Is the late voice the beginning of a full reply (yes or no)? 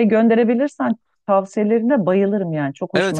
yes